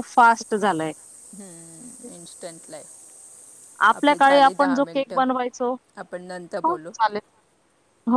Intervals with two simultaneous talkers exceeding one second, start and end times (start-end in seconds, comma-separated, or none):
none